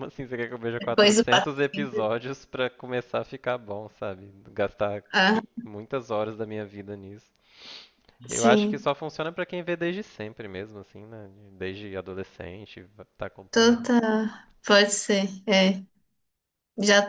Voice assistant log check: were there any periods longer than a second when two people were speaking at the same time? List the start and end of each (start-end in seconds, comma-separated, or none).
0.8-2.1